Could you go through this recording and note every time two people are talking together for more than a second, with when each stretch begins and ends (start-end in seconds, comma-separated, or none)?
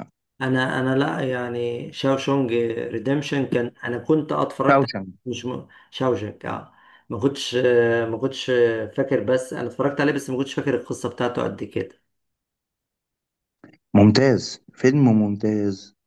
none